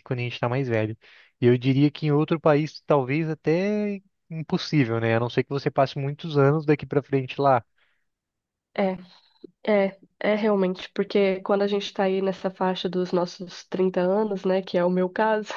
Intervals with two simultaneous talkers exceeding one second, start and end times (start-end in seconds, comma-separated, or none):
none